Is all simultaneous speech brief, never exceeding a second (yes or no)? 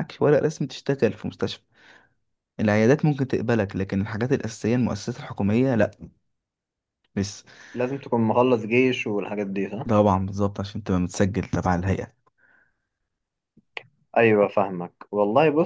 yes